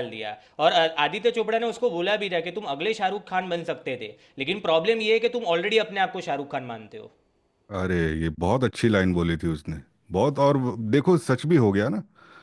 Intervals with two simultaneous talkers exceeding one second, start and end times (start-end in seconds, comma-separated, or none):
none